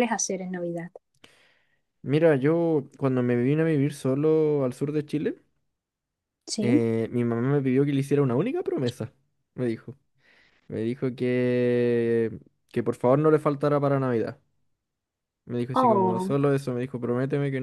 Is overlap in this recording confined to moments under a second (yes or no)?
yes